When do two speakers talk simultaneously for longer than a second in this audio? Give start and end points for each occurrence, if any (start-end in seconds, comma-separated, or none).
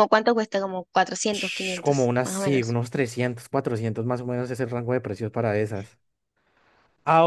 1.3-2.8